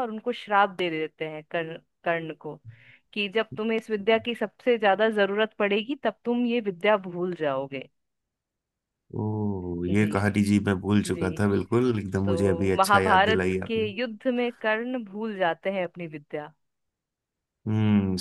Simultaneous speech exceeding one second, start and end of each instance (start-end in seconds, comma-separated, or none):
12.2-13.8